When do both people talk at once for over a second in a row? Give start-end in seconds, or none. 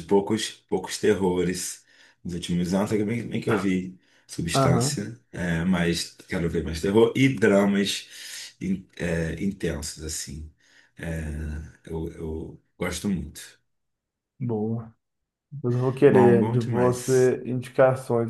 16.1-17.4